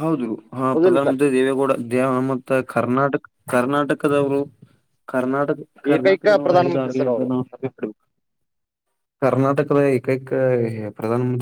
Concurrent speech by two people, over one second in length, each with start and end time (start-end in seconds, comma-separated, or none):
5.9-7.3